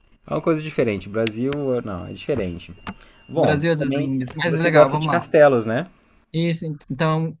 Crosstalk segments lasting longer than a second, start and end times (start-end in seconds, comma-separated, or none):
3.3-5.2